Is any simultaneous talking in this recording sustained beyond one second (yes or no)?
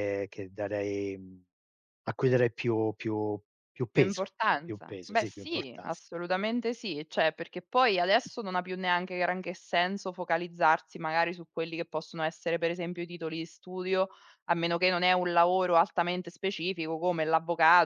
yes